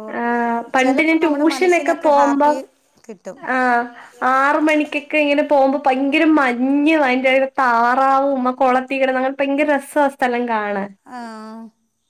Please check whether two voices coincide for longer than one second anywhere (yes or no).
yes